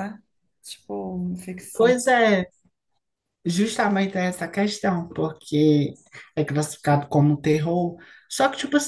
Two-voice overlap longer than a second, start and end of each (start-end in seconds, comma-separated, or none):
none